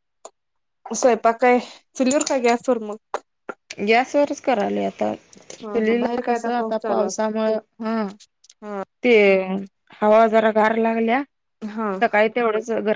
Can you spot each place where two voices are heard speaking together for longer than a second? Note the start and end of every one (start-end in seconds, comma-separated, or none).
5.6-7.3